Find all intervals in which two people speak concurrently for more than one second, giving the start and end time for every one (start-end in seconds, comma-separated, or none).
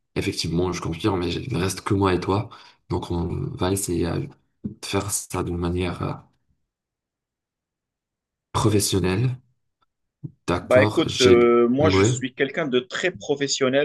10.6-12.1